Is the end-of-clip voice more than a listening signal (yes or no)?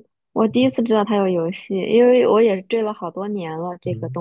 no